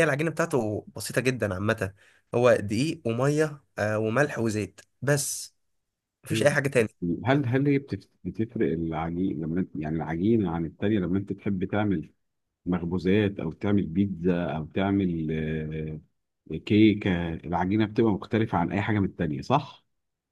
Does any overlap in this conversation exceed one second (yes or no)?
no